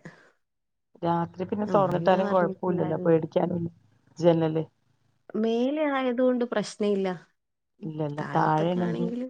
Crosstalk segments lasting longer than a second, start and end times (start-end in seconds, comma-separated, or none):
1.7-3.1